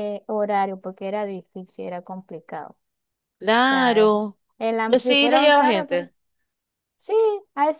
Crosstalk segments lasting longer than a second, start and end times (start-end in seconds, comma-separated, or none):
4.9-6.1